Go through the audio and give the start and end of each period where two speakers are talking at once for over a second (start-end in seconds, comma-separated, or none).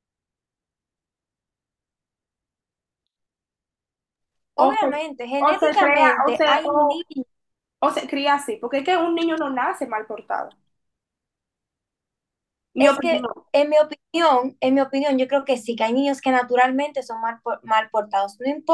5.5-7.0